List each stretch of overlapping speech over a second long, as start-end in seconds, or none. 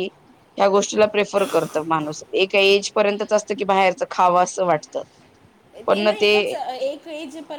none